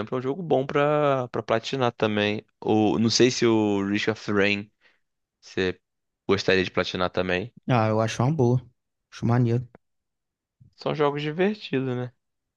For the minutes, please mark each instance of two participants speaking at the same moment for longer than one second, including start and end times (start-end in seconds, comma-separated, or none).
none